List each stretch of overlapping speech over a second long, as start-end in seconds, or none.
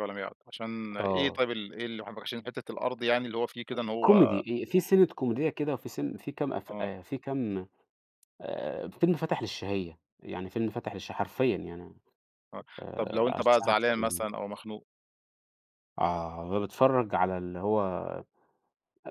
12.8-14.3